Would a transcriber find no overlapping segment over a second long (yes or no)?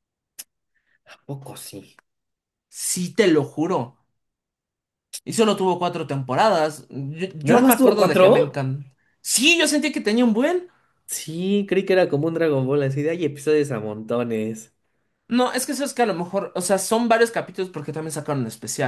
no